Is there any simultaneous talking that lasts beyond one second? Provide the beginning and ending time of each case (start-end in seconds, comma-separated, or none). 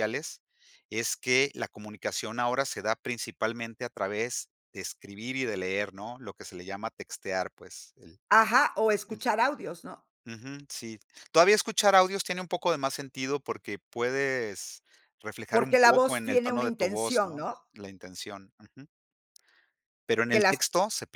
15.5-17.6